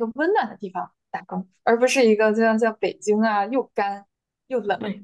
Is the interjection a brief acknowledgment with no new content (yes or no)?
no